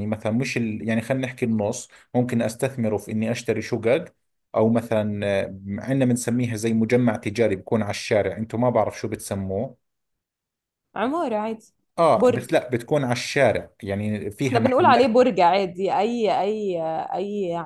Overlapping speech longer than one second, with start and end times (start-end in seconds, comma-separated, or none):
none